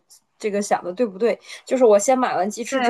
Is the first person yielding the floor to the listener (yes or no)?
no